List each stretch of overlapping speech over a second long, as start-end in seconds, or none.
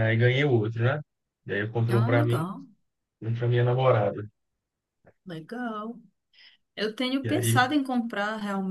none